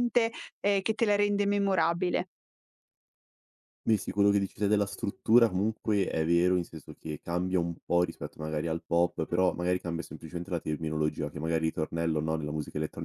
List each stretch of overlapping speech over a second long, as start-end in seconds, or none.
none